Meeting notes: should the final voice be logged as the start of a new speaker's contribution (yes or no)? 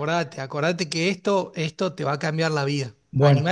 yes